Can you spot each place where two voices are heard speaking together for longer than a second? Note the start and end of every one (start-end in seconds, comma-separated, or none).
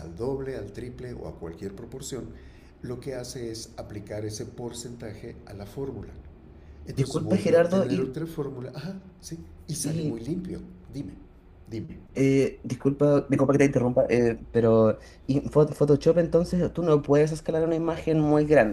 6.9-8.2